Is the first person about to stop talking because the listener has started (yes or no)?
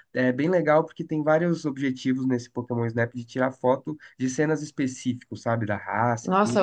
yes